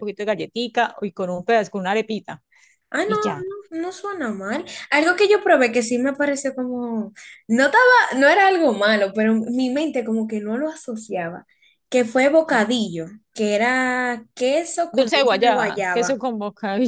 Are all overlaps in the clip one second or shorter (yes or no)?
no